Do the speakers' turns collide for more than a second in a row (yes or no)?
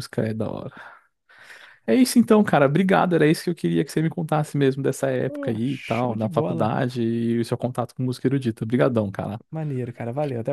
yes